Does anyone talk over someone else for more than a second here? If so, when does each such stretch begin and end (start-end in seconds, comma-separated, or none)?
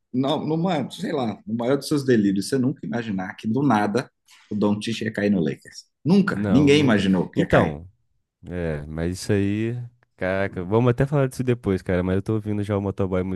6.3-7.8